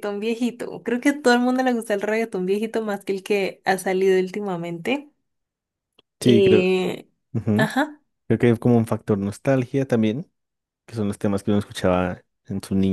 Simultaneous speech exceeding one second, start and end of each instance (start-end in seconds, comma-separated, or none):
none